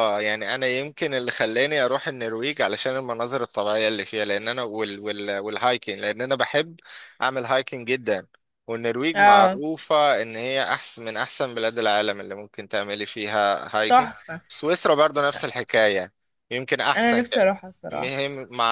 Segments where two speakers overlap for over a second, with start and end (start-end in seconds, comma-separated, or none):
none